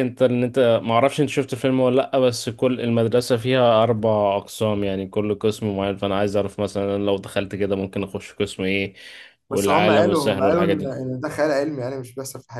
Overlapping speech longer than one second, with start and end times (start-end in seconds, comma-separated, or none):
9.5-11.1